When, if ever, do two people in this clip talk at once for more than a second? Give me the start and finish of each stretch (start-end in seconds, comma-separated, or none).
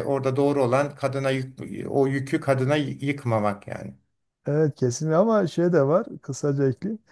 none